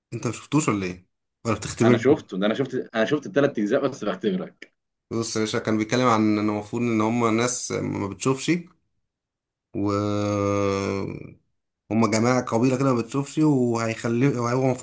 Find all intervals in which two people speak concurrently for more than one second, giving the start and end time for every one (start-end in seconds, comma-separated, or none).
none